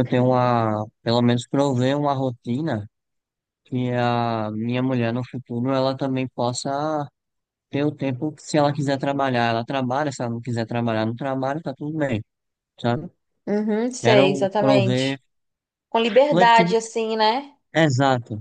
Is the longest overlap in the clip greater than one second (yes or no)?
yes